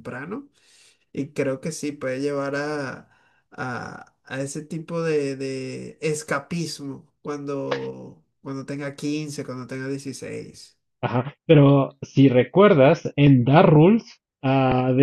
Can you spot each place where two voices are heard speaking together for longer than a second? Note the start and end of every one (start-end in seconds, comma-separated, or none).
none